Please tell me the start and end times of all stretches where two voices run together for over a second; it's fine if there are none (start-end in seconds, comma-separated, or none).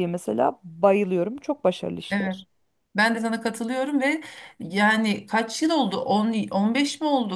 none